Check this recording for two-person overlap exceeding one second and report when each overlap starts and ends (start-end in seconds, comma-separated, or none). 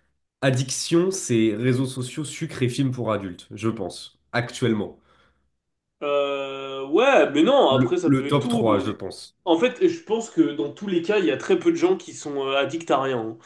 7.7-8.9